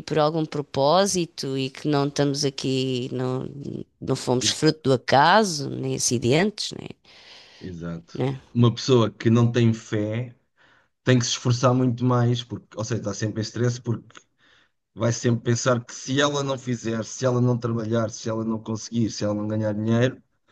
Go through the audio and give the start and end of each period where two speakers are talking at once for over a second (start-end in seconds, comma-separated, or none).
none